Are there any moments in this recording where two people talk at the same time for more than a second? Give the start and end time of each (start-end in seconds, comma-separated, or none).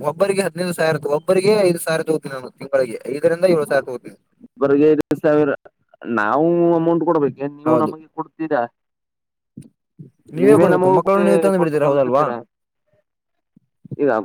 10.6-12.2